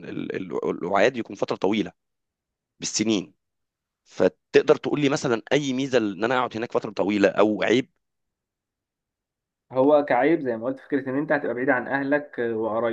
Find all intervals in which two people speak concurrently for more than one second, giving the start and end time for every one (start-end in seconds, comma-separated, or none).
none